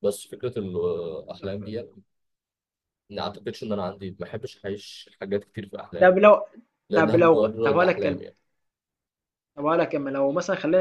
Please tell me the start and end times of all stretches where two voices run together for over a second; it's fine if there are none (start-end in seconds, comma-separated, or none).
6.9-8.2